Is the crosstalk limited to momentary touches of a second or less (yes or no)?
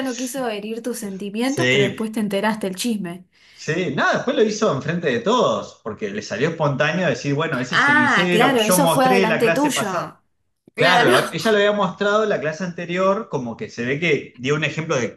no